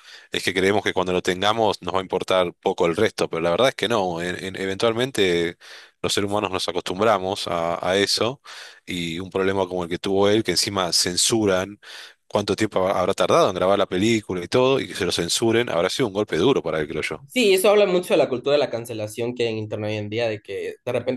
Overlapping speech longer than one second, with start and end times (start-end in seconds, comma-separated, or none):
none